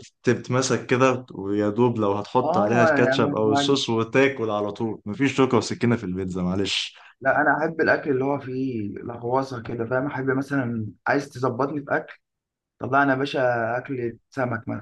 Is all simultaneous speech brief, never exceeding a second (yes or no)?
no